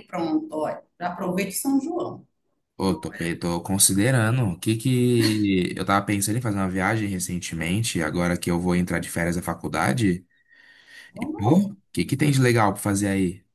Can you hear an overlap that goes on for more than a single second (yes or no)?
no